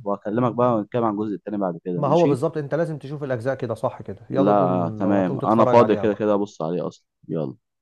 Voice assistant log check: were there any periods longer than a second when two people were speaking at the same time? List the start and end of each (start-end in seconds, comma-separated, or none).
4.3-6.3